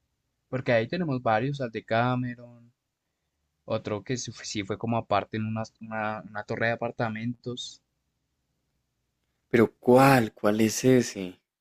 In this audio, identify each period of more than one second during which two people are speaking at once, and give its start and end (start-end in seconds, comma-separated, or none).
none